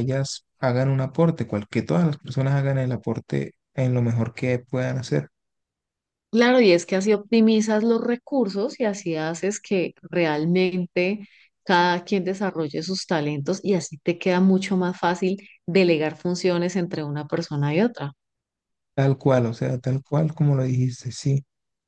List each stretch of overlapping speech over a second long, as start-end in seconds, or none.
none